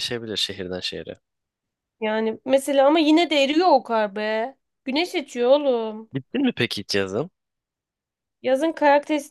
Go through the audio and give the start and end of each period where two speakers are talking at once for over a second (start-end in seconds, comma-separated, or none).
none